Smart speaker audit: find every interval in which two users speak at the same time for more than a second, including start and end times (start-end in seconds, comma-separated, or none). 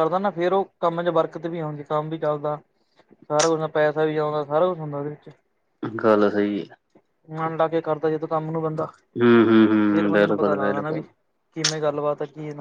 9.7-11.0